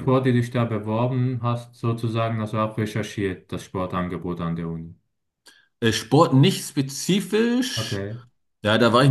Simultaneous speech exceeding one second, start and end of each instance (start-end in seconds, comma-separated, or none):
none